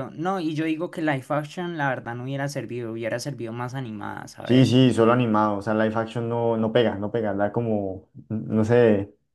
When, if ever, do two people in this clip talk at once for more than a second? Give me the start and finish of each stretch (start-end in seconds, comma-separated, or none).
none